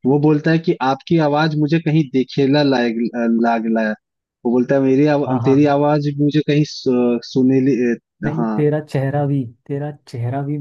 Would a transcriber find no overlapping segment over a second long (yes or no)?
yes